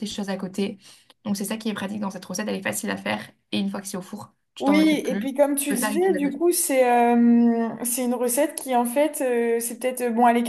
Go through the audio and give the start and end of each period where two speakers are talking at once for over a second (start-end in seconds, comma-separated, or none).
4.6-6.4